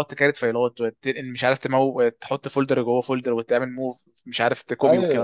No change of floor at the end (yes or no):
no